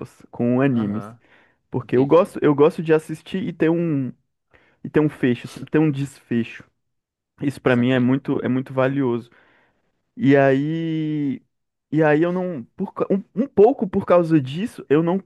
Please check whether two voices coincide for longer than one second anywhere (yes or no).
no